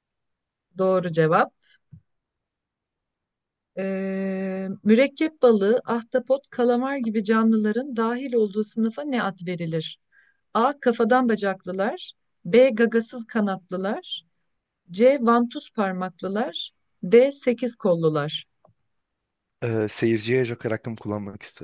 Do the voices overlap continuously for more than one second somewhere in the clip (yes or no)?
no